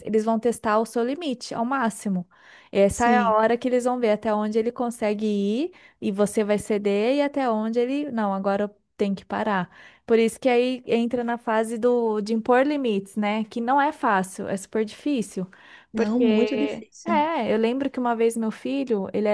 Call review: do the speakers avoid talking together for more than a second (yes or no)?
no